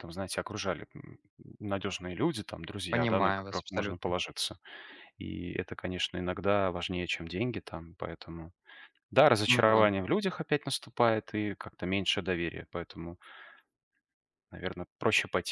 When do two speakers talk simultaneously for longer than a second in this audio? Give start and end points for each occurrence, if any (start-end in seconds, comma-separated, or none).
2.9-4.2